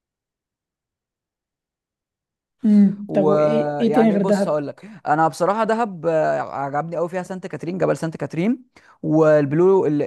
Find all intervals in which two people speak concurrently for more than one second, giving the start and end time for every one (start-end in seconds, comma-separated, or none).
3.1-4.6